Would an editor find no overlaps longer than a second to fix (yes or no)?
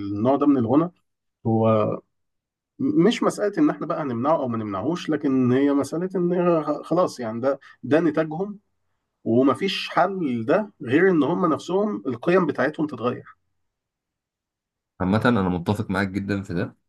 yes